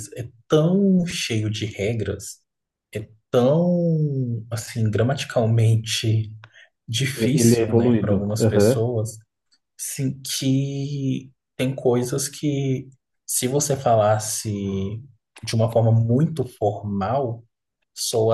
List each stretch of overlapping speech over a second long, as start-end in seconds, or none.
7.2-8.8